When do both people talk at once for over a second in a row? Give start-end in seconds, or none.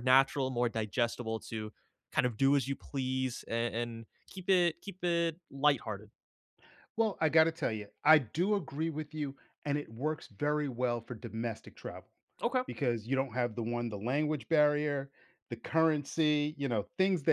none